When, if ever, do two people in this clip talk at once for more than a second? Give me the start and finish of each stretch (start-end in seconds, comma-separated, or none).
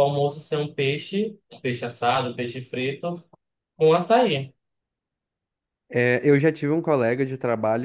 none